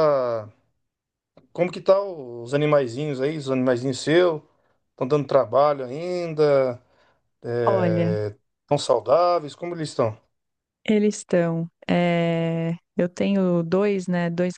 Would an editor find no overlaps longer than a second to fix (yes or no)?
yes